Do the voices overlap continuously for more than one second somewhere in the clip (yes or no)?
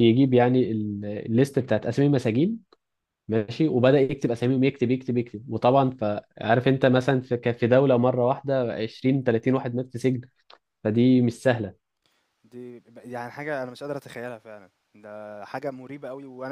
no